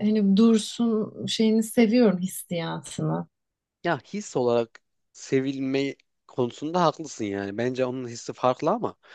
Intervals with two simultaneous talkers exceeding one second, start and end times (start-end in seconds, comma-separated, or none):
none